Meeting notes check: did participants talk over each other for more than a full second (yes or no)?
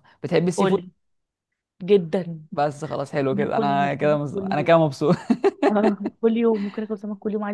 yes